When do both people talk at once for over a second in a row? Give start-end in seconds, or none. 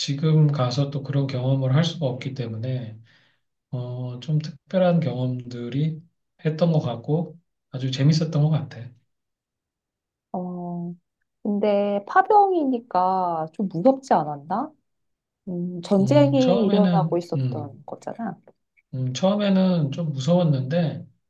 16.0-17.8